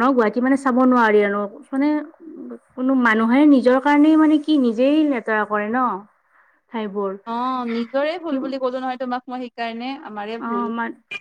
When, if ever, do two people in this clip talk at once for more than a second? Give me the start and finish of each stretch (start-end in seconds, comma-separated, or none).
none